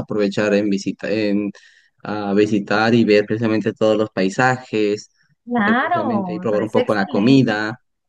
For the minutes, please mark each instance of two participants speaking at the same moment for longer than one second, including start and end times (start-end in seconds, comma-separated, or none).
5.5-7.5